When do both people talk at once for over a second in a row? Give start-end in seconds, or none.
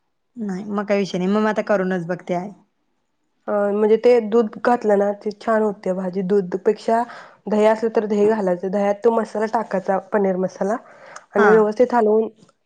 none